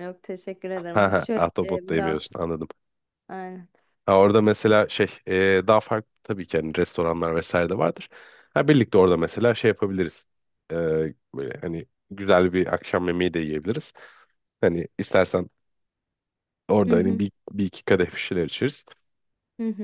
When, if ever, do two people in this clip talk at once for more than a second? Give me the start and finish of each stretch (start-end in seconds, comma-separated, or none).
0.9-2.4